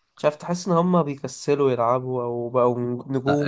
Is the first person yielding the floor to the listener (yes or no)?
yes